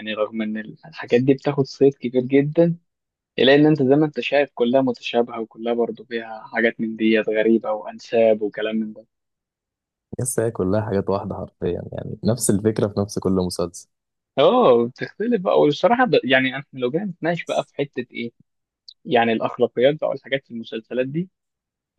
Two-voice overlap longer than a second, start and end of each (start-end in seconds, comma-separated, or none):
none